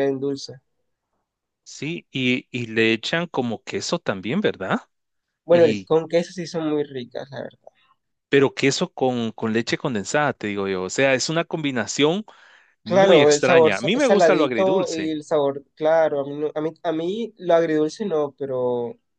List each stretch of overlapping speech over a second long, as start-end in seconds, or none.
12.8-15.2